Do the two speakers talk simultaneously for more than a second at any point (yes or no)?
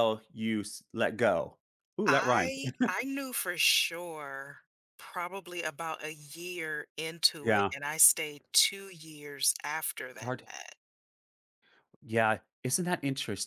no